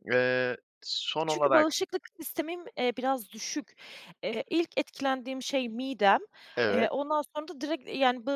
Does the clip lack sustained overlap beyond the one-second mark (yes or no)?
yes